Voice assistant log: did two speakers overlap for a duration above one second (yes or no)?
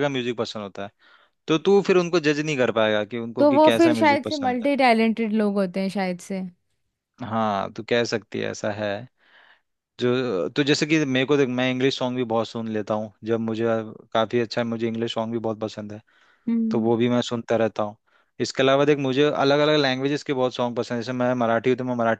yes